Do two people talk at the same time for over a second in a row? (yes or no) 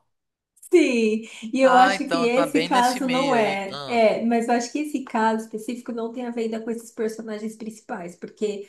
yes